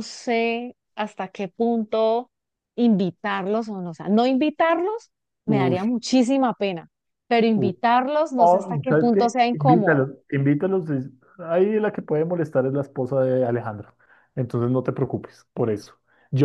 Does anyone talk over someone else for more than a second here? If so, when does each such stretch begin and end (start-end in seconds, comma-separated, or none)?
8.4-10.1